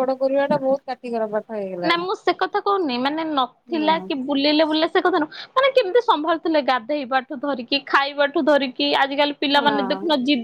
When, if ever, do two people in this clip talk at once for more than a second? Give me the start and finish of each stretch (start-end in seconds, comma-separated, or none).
none